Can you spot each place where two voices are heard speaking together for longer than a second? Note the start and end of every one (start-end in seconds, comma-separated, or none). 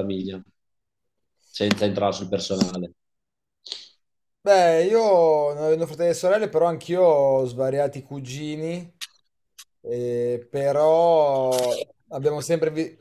none